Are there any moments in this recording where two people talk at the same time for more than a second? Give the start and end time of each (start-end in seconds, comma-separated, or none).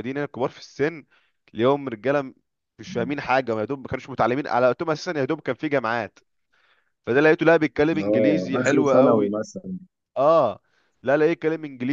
8.0-9.3